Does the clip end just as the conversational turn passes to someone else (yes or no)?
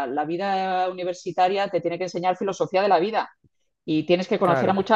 no